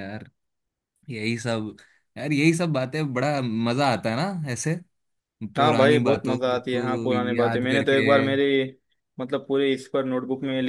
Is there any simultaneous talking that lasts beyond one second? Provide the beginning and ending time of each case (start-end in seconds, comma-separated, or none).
5.6-8.0